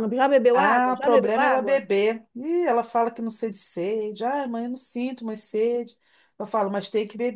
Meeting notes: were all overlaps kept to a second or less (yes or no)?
no